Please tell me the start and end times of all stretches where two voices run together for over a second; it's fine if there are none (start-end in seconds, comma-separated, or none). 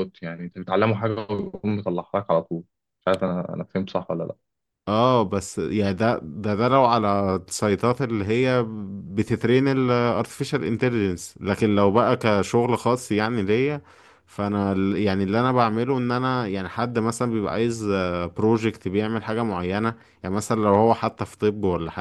none